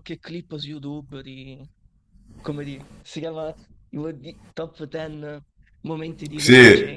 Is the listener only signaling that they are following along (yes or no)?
no